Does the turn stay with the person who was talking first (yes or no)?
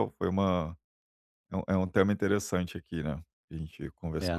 no